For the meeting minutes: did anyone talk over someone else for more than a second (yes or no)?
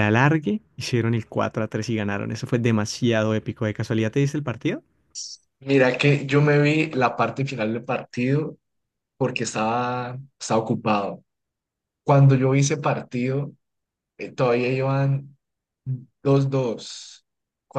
no